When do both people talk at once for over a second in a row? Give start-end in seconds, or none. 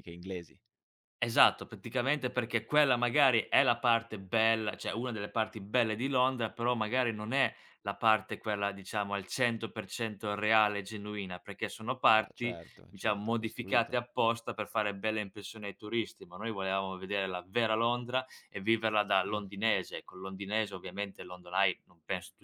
12.1-14.0